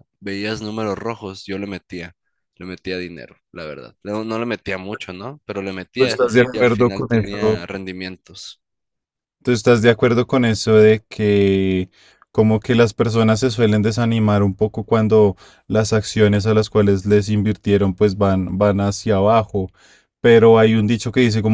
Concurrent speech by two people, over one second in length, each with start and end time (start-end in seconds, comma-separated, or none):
6.0-7.6